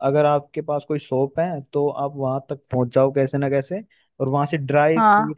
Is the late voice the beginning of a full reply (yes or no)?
no